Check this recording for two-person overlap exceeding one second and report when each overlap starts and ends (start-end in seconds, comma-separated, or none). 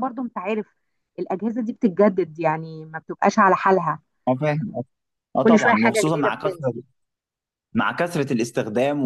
5.5-6.7